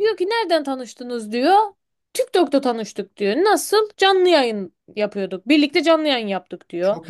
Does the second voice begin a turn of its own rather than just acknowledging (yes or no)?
no